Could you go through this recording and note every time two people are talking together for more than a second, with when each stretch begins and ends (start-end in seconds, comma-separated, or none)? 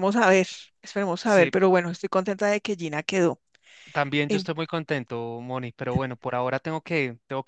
none